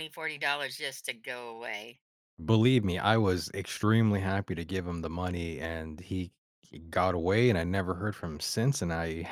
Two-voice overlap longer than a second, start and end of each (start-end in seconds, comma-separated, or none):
none